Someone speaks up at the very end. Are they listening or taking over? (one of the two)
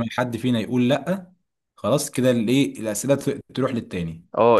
taking over